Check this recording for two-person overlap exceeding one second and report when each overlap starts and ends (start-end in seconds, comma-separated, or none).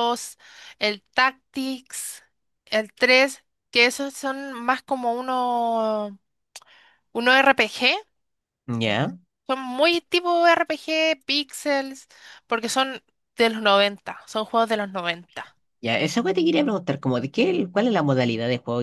none